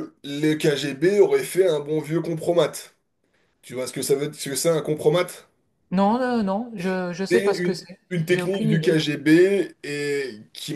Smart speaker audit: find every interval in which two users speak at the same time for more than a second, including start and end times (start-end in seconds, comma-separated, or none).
7.3-9.0